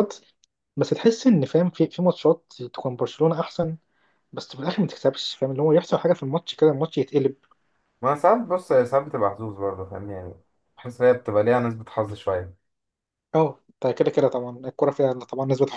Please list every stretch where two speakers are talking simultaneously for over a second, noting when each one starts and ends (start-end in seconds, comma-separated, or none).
none